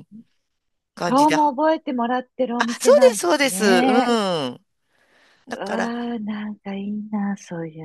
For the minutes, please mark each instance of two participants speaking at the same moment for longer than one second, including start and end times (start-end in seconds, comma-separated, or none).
2.6-4.0